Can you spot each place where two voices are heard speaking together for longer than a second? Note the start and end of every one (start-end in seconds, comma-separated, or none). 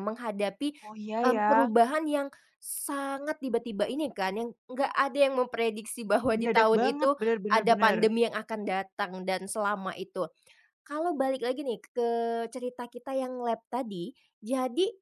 6.3-8.0